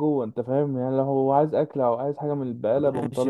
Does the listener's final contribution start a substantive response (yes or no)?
yes